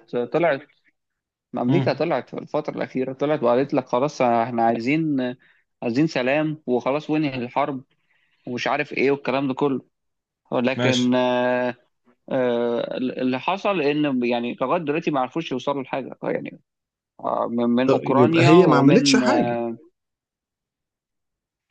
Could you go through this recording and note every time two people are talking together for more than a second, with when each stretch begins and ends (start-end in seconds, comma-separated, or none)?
17.9-19.6